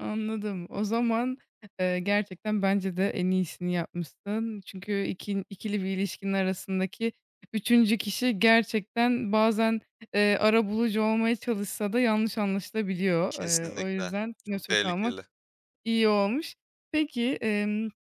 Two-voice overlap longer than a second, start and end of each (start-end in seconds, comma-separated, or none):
13.3-15.1